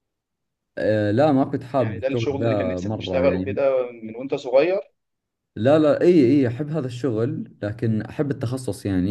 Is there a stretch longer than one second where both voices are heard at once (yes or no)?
yes